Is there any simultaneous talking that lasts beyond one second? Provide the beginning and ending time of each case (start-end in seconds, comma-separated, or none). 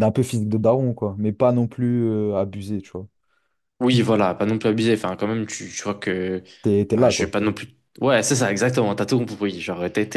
none